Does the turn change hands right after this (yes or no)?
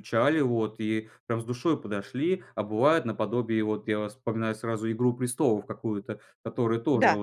no